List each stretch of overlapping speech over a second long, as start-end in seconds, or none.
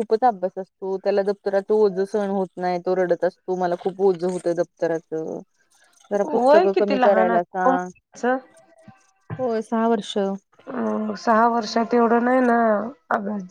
6.2-7.9